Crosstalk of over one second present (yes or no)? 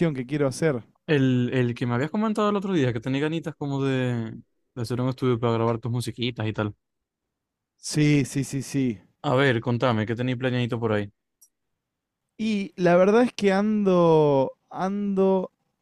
no